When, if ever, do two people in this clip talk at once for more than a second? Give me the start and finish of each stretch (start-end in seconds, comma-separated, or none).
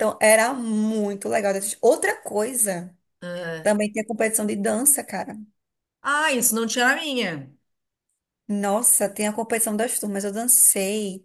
none